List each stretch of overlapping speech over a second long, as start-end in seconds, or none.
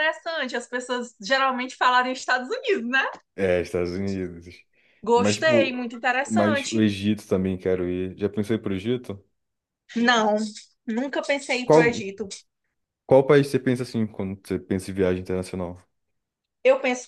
5.2-6.9